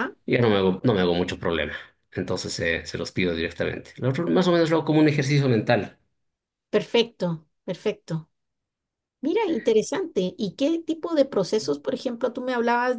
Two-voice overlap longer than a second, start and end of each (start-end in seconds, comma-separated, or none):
none